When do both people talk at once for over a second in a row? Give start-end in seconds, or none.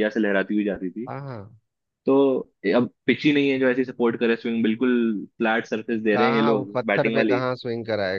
6.1-7.4